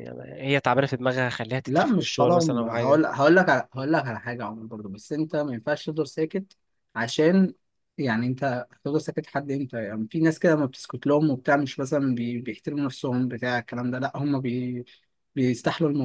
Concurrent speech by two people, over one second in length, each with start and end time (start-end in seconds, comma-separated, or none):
1.7-3.0